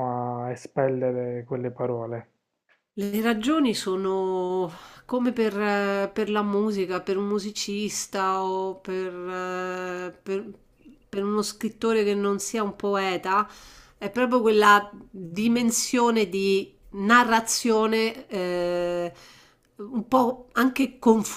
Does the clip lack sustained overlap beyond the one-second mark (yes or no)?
yes